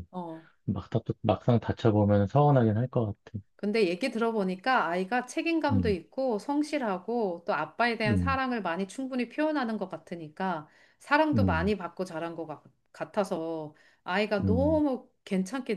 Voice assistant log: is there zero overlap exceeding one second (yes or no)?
yes